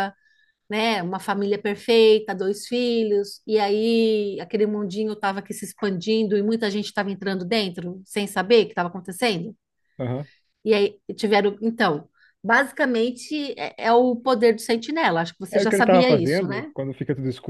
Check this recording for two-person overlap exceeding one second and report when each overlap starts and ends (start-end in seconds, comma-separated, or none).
15.5-16.7